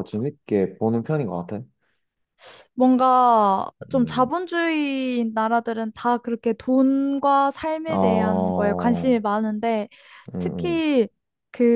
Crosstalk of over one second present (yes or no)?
yes